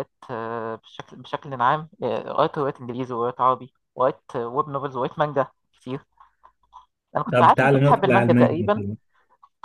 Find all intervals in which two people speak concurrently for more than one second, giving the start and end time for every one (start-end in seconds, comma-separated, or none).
7.3-8.8